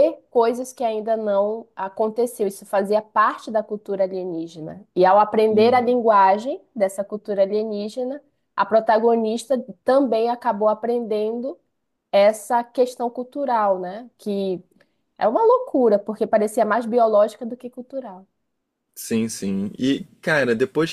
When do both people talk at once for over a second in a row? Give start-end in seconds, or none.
none